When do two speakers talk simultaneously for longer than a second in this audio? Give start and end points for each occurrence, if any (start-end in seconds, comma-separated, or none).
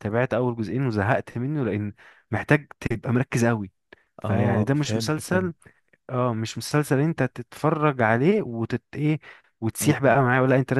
4.2-5.5